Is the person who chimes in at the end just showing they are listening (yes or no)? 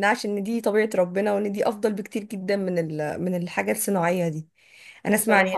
yes